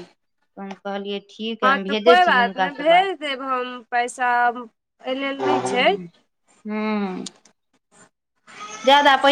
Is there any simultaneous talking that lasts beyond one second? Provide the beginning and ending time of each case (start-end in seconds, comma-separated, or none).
1.6-3.1